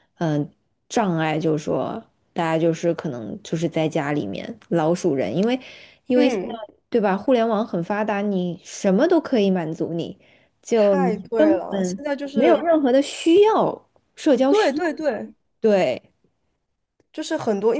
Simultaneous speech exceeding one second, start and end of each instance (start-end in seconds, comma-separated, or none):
10.7-12.7